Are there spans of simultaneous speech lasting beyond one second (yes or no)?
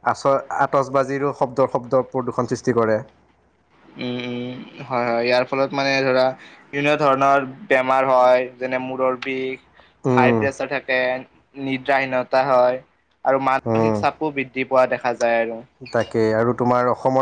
no